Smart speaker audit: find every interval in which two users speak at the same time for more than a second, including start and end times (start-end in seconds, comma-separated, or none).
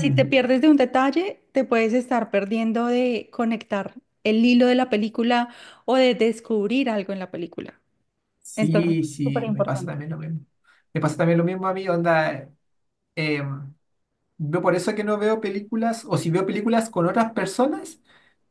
8.6-9.9